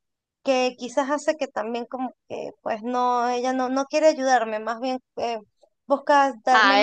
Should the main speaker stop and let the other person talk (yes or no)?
yes